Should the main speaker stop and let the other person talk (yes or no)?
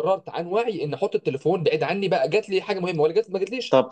yes